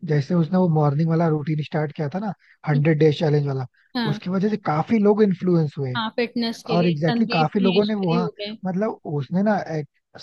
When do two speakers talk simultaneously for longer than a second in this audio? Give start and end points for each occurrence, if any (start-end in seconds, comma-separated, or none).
6.7-8.3